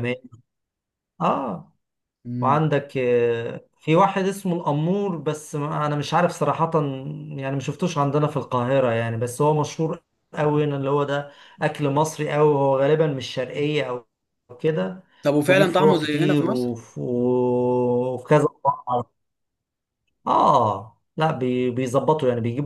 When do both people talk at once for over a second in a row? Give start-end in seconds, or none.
15.5-16.7